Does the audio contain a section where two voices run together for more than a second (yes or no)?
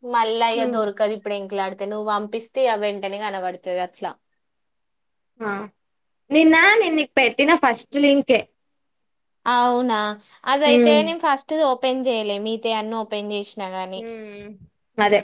no